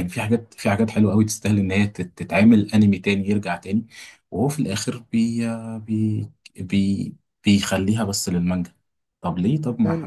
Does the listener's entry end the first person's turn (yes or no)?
yes